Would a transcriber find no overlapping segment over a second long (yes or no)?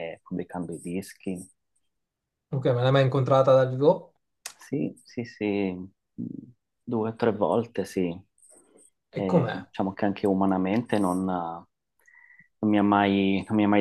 yes